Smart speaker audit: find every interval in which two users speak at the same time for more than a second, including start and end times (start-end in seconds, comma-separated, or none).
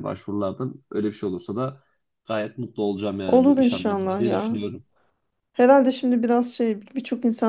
3.3-4.6